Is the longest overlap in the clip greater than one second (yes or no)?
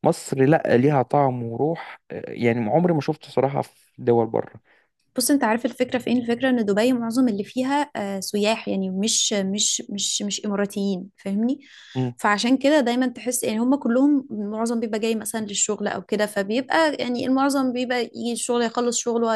no